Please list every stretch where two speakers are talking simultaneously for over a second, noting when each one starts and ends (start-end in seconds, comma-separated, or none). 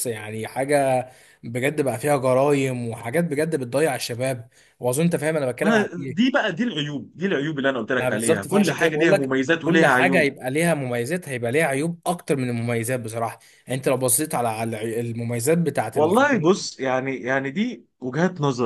8.0-10.3